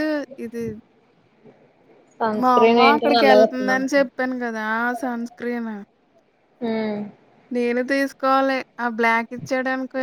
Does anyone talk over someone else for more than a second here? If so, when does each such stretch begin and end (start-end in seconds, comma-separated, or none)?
2.4-4.1